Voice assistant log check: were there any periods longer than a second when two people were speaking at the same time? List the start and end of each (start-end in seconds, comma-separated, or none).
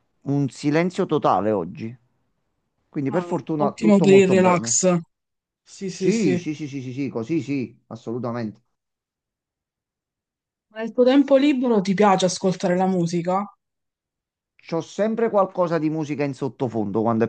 3.1-4.8